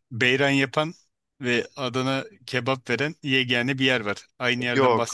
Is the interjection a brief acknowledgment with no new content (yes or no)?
no